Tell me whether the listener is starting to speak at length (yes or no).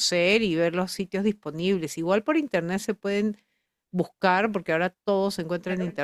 no